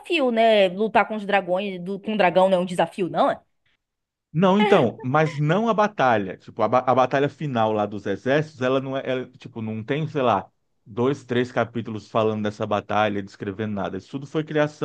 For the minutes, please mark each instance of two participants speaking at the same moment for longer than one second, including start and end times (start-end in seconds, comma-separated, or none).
none